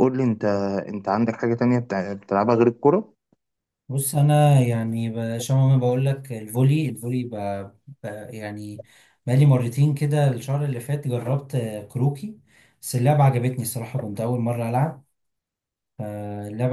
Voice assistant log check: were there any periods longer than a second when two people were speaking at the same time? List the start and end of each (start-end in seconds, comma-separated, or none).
none